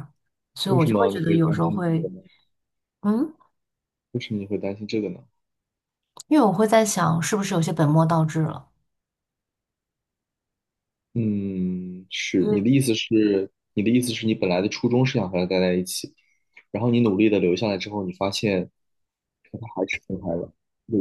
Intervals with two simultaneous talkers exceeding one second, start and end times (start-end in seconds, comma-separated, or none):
0.7-2.1